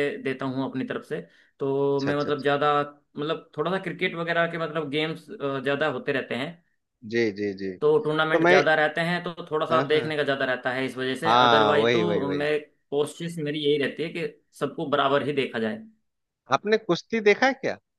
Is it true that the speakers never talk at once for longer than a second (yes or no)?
no